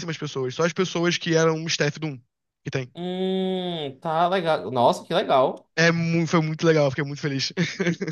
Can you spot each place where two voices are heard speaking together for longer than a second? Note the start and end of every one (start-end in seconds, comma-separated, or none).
none